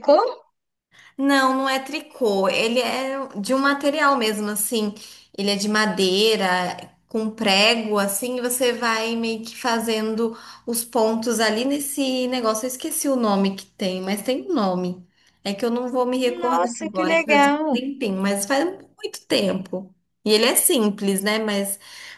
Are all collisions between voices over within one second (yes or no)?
no